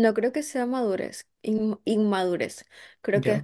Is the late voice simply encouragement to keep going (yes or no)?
yes